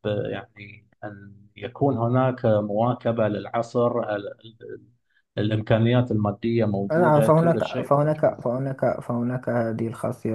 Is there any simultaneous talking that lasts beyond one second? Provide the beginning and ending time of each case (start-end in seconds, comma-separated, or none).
6.9-8.4